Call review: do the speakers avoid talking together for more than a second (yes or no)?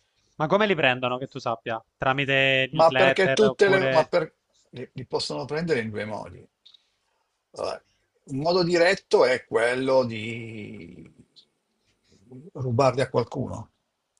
no